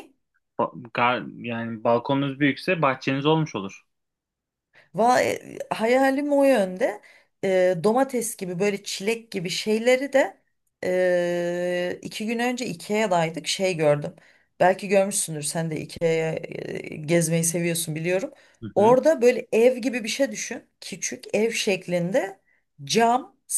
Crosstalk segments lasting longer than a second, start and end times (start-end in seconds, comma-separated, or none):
none